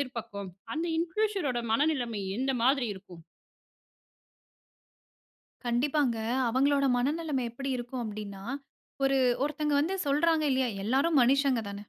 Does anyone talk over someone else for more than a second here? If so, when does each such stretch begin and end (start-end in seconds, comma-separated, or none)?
none